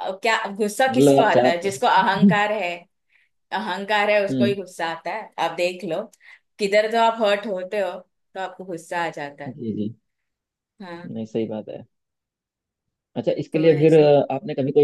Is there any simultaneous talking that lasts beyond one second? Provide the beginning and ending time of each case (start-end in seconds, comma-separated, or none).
0.9-2.4